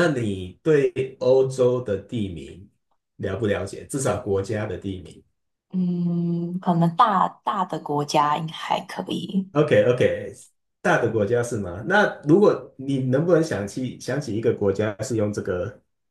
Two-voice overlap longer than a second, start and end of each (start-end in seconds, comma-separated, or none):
none